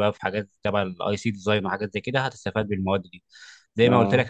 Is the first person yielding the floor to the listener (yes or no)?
no